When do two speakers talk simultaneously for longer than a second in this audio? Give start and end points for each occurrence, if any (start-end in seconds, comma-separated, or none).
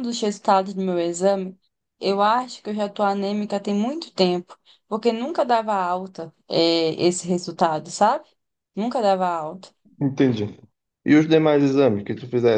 none